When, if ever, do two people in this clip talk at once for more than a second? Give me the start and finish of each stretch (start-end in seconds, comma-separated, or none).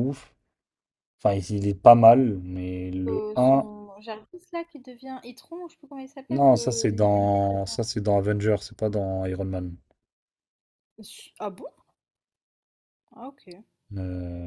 6.3-7.8